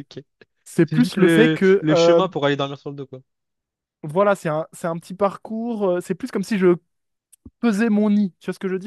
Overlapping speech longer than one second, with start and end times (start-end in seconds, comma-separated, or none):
0.9-2.2